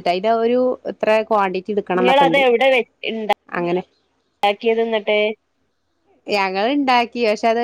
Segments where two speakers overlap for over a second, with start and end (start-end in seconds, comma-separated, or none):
none